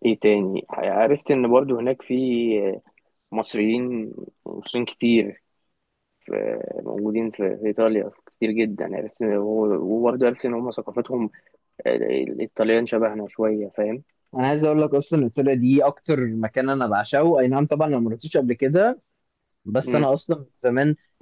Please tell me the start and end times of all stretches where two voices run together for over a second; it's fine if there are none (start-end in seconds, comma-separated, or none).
none